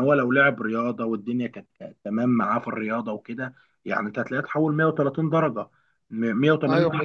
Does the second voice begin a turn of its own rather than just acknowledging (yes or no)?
no